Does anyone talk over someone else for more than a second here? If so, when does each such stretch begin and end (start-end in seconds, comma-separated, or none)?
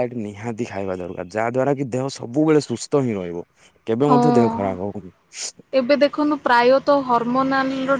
none